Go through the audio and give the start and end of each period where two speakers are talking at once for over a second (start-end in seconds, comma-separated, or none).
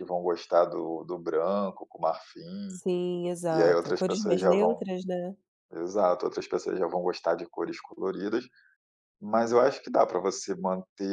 3.5-4.8